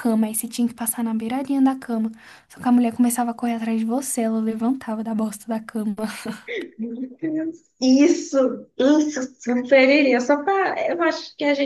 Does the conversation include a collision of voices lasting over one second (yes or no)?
no